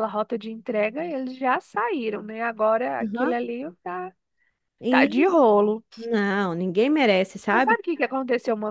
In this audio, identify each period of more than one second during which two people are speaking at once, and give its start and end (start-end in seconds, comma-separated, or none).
none